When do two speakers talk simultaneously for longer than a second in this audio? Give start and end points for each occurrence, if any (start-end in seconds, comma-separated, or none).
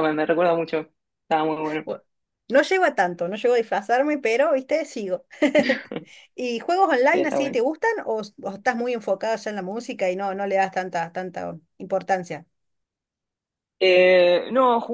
none